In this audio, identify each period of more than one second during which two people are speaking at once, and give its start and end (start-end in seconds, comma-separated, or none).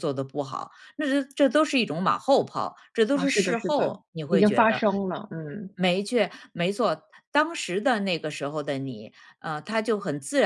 3.1-4.8